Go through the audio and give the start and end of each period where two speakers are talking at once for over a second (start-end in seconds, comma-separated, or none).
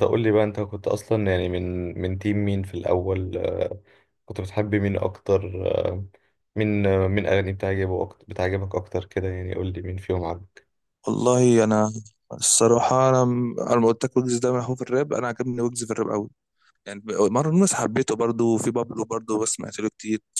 none